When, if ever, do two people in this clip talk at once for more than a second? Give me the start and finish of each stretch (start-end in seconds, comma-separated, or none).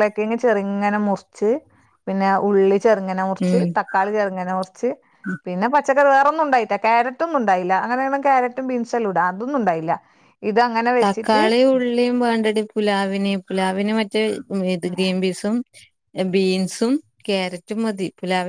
none